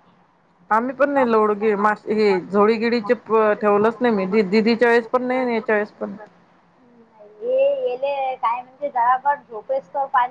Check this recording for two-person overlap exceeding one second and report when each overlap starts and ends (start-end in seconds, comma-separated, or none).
none